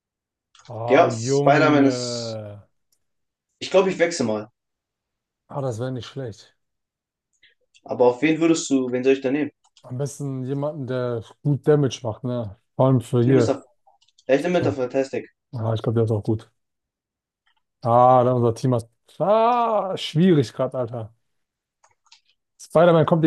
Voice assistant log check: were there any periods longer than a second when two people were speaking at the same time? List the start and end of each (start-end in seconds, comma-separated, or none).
0.9-2.4